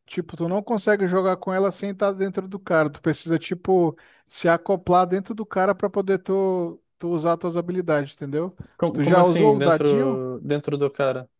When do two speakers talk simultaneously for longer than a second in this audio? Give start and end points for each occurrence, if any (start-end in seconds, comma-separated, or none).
8.9-10.2